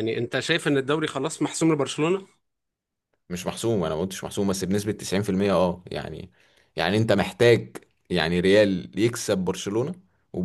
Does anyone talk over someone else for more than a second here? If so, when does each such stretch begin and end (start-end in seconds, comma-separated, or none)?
none